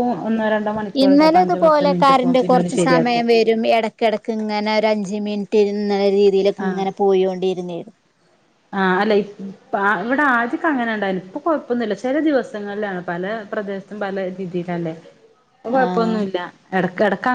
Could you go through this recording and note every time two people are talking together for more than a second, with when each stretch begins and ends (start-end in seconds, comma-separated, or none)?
1.0-3.2